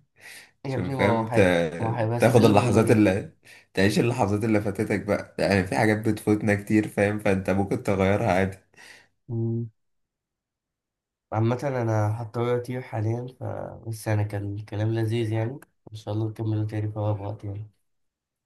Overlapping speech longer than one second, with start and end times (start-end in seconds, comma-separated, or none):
0.7-2.5